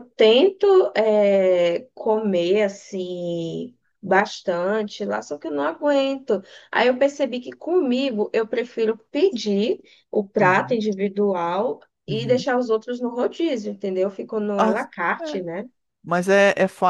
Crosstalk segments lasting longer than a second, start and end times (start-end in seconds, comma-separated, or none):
none